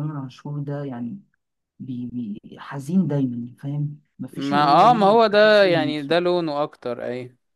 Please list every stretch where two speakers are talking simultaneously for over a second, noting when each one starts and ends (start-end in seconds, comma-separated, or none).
4.3-5.9